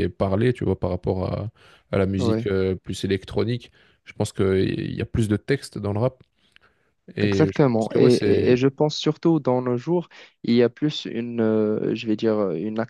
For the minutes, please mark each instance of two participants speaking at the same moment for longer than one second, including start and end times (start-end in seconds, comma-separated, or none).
7.2-8.6